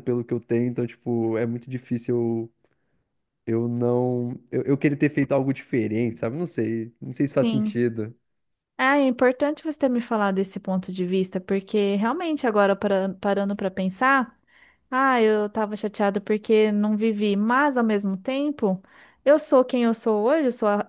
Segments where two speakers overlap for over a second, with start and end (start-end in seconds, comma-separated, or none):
none